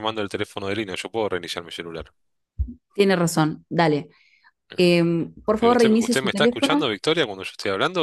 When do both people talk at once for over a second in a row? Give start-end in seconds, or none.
5.6-6.9